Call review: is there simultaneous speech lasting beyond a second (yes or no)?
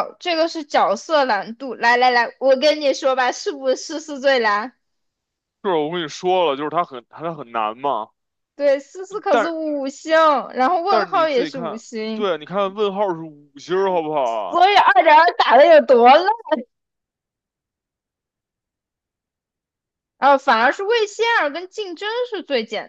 yes